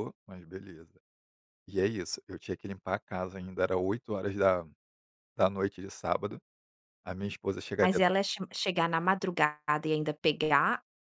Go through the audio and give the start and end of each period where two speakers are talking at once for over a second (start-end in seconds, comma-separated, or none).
none